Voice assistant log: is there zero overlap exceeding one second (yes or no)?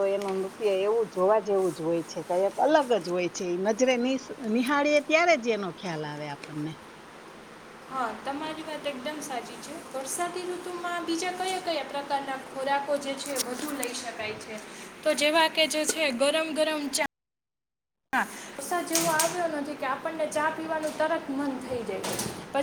yes